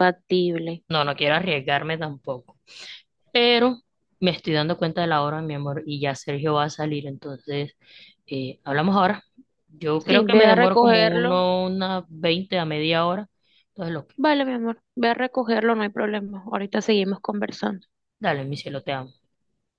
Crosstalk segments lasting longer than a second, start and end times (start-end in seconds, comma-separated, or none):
10.0-11.4